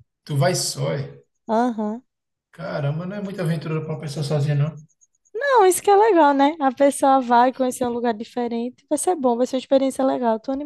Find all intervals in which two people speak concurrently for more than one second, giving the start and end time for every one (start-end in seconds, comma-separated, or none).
none